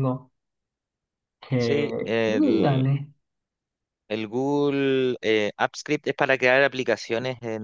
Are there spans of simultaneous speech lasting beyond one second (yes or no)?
yes